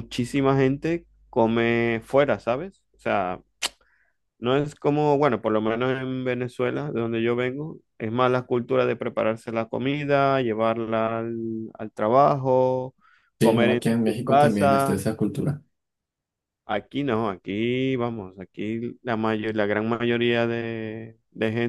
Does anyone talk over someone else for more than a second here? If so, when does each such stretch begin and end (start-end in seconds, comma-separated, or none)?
13.4-15.0